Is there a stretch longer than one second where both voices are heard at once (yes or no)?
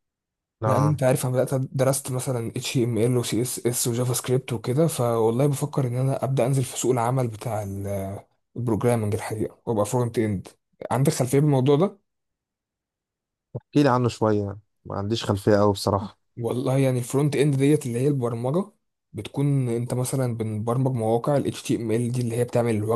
no